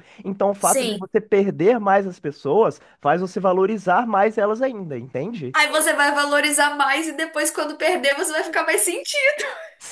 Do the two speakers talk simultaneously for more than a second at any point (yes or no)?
no